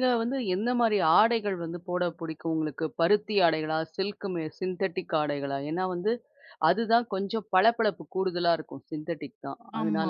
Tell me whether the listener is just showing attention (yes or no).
no